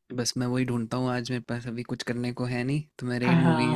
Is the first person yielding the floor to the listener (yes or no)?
yes